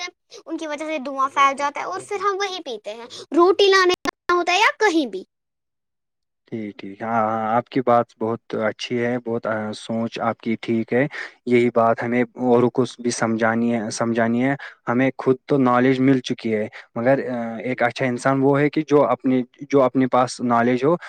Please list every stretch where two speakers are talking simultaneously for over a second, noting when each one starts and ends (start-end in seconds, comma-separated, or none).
none